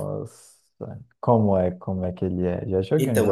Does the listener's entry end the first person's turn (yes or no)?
yes